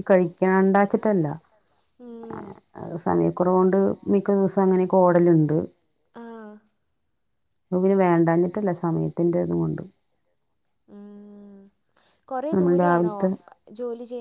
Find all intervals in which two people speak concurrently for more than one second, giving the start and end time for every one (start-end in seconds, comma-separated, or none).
none